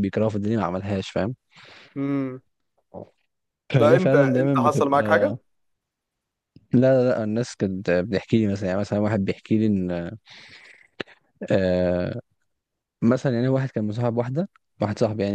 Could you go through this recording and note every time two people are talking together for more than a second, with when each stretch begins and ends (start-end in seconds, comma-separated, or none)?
3.8-5.3